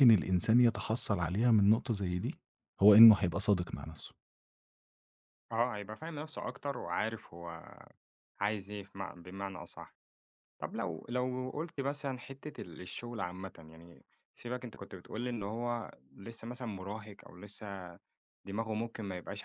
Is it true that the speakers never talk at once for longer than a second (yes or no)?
yes